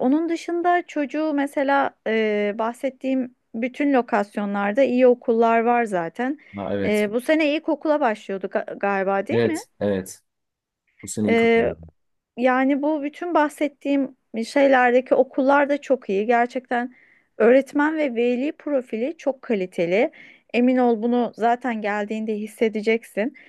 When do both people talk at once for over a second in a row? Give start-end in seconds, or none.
none